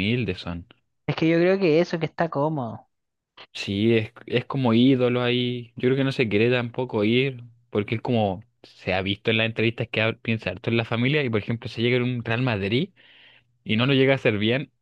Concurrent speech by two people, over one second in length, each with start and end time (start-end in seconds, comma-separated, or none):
none